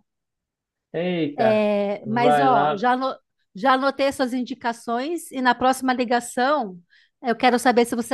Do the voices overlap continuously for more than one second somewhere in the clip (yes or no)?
yes